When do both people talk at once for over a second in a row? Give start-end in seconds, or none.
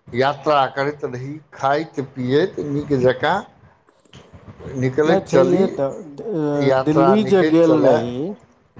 6.7-8.3